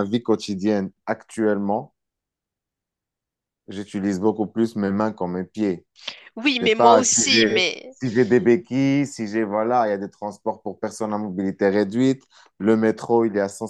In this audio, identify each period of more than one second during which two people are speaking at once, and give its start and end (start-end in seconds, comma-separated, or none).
6.4-8.0